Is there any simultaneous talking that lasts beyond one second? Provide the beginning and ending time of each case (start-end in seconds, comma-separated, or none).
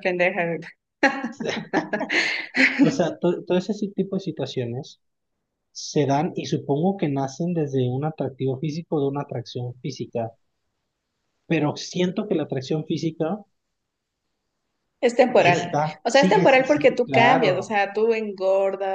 15.3-17.8